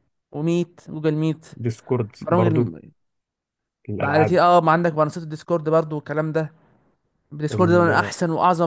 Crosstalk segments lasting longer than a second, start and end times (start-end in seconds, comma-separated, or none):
none